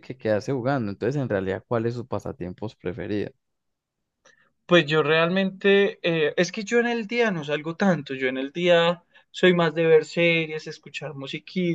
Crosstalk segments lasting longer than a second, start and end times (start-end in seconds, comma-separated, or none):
none